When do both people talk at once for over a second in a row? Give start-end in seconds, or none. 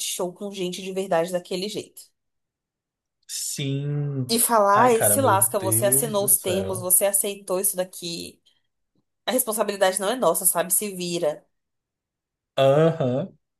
4.7-6.9